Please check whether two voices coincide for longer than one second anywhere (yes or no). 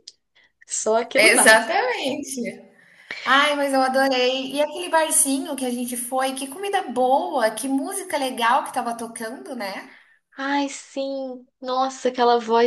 no